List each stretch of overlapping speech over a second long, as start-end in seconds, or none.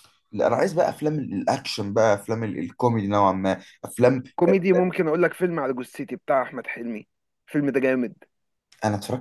none